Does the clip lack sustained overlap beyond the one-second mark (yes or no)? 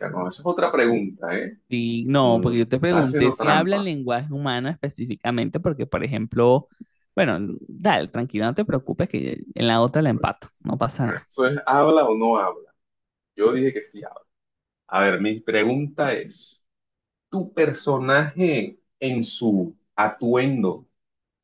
no